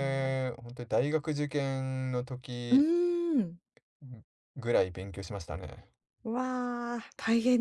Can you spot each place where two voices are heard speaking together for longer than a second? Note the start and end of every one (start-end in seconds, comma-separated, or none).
none